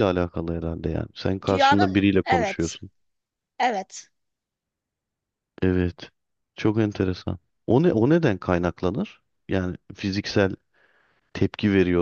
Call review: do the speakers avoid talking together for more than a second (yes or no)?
no